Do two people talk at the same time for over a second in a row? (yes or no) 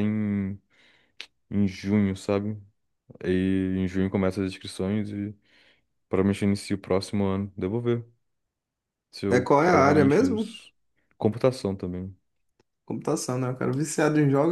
yes